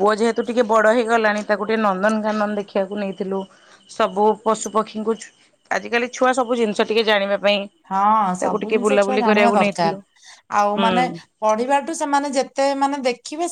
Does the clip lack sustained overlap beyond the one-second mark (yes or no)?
no